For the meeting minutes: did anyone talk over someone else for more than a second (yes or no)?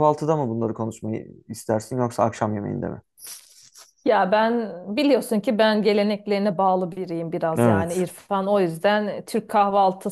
no